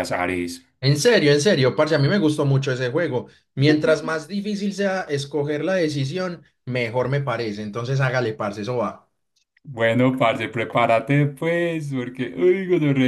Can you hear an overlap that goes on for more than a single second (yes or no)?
no